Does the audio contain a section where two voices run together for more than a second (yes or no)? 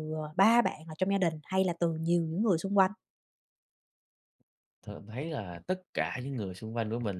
no